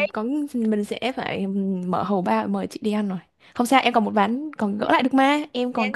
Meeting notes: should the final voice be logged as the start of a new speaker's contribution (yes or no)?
yes